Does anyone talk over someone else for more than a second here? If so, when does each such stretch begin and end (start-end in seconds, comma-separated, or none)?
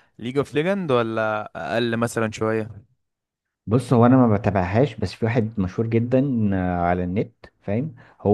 none